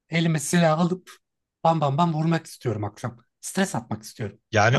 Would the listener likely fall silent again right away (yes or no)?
no